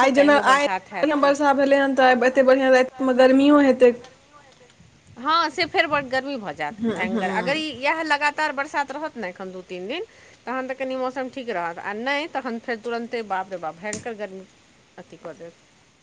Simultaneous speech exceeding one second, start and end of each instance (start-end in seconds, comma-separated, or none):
none